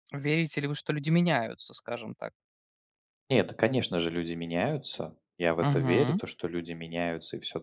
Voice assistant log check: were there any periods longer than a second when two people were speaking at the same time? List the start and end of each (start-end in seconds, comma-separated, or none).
none